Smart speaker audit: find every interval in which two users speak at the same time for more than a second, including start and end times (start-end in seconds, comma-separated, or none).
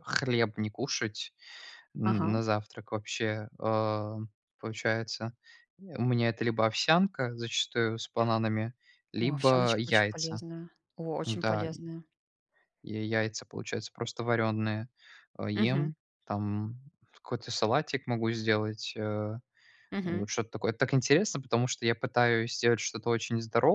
9.2-10.4